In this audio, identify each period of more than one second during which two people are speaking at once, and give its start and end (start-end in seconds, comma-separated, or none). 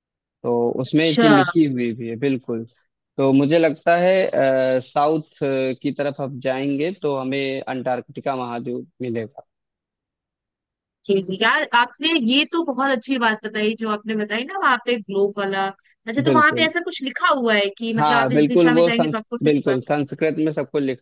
18.0-19.7